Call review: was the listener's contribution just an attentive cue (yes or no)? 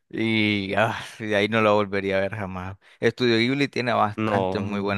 yes